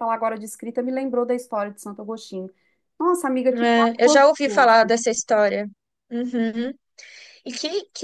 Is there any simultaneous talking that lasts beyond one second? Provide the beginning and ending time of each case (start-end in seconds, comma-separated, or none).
3.5-4.9